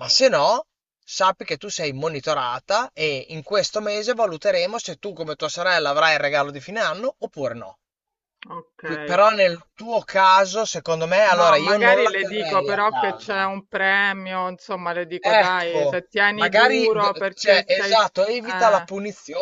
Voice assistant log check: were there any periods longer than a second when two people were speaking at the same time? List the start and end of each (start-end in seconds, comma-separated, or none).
11.4-13.5, 15.2-18.9